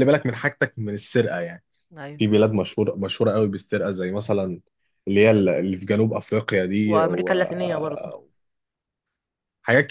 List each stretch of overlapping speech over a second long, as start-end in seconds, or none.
6.8-8.1